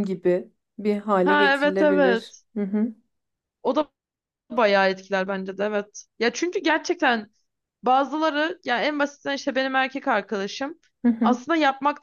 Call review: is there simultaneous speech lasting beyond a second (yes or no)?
yes